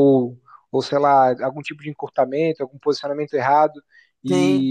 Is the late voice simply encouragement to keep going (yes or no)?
yes